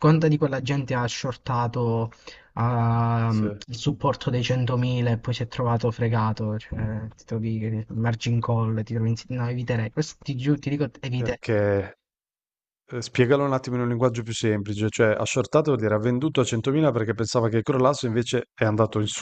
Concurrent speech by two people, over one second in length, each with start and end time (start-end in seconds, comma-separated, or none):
none